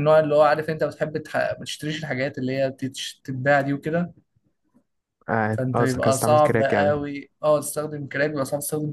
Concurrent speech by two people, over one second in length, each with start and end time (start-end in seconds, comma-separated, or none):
5.5-7.0